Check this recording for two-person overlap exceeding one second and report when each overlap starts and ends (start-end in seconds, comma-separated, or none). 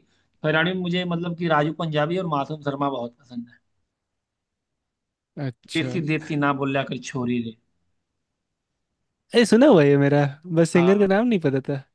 none